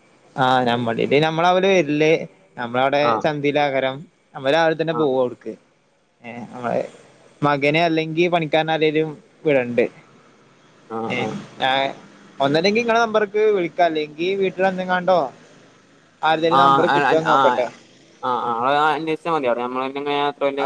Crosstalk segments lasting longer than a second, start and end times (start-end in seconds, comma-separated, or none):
16.4-17.6